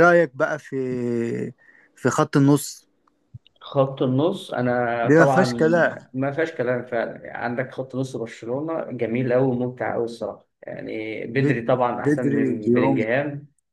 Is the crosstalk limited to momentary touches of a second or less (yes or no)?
no